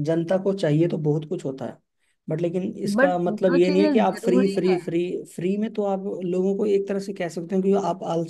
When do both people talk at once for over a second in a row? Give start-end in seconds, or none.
3.0-4.8